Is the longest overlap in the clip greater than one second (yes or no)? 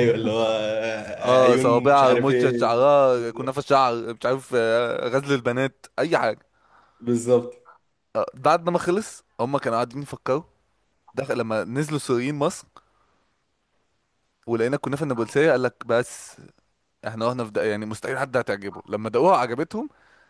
yes